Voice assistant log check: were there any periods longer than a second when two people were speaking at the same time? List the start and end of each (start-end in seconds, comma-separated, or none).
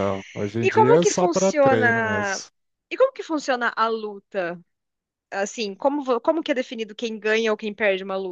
0.6-2.4